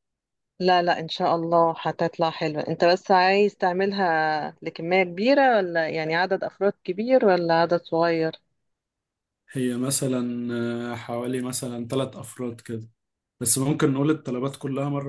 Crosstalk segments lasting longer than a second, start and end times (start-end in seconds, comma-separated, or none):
none